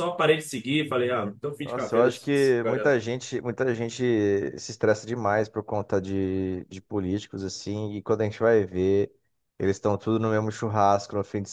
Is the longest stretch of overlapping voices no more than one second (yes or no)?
no